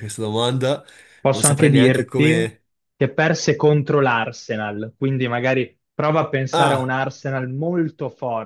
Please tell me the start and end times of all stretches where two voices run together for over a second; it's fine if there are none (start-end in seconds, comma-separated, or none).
1.3-2.5